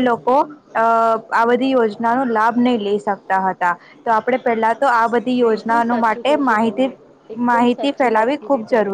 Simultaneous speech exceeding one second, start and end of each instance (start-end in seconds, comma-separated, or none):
5.3-6.9